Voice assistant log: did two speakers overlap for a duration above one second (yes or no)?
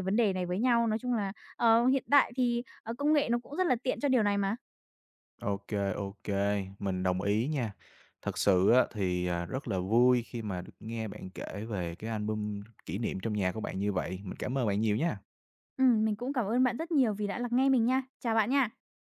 no